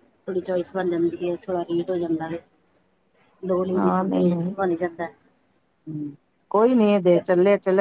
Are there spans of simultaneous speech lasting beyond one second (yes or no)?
no